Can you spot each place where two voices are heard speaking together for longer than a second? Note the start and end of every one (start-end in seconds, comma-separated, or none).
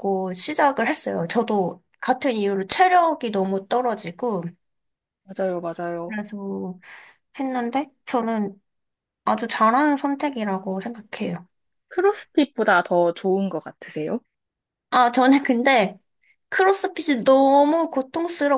none